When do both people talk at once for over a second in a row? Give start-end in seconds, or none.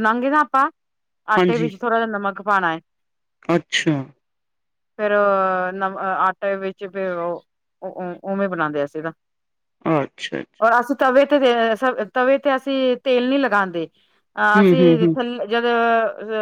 none